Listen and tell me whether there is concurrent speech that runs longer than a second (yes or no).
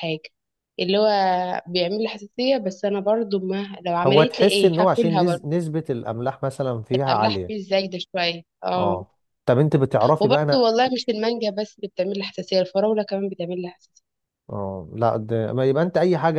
yes